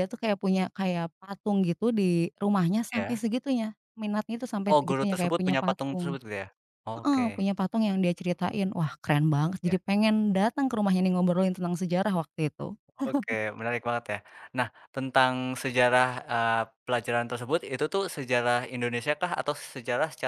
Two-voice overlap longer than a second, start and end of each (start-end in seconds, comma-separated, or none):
4.7-6.2